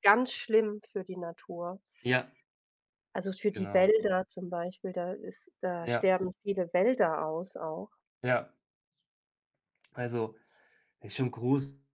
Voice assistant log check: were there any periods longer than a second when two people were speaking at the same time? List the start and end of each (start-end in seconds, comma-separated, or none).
none